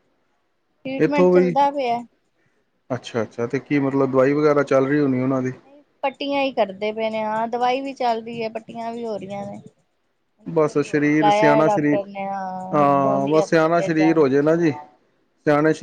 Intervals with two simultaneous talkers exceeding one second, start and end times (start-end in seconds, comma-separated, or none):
10.5-12.0, 12.8-14.3